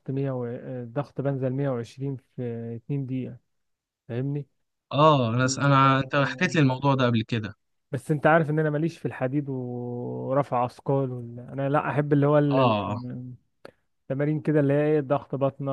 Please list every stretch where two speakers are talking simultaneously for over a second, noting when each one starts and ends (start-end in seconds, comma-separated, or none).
5.4-6.6